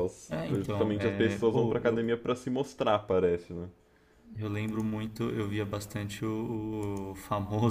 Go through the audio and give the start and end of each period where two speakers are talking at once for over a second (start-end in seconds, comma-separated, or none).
0.5-2.2